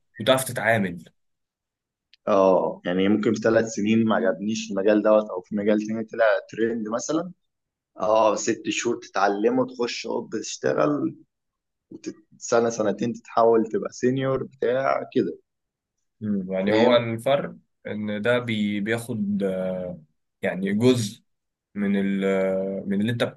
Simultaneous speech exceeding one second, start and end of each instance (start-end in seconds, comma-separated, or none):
none